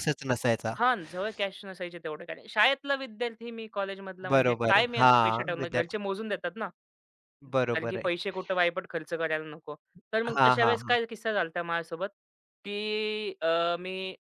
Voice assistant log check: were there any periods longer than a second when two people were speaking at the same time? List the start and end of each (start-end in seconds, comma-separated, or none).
4.3-6.0